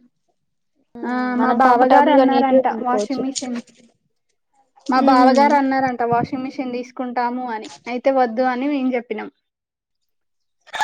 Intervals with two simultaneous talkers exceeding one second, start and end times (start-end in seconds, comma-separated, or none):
1.4-3.2